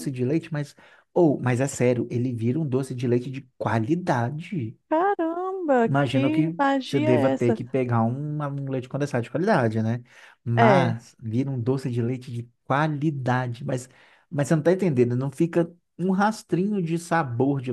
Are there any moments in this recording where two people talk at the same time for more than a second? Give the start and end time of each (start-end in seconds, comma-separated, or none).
5.8-7.6